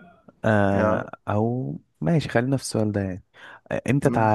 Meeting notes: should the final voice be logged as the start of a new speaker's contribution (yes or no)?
no